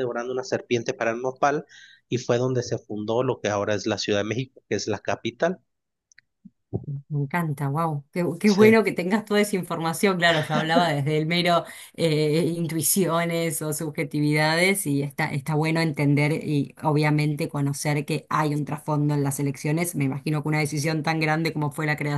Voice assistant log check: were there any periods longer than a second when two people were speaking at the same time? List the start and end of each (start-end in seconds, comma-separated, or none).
none